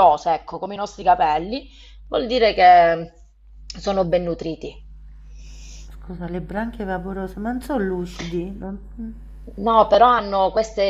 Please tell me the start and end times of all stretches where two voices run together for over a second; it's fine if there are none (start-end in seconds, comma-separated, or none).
none